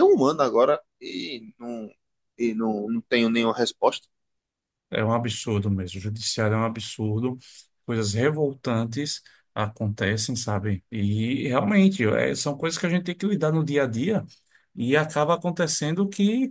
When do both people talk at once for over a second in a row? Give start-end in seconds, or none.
none